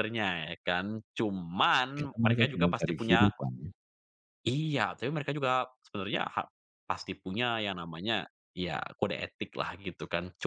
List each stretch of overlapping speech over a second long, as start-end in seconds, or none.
2.0-3.3